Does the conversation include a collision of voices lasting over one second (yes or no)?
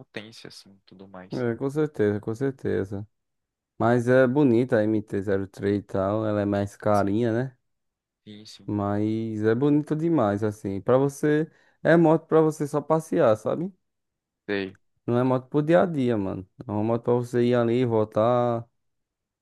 no